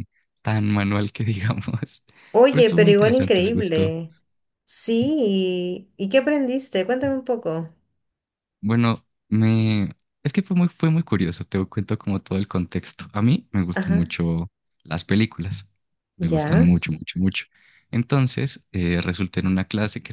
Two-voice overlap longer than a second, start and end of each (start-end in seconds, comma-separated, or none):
2.5-3.9